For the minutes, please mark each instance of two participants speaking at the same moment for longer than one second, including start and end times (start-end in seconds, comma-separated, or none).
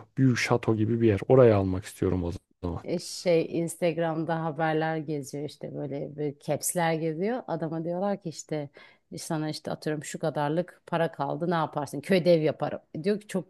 none